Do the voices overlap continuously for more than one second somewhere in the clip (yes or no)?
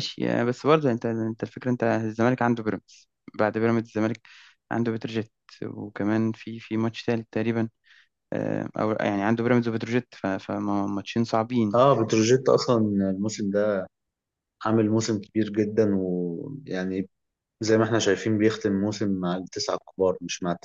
no